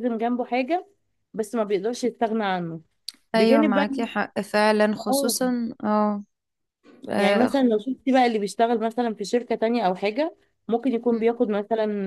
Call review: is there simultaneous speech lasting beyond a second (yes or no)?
no